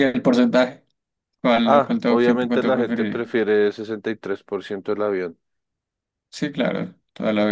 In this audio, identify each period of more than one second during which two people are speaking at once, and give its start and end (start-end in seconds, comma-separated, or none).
1.6-3.3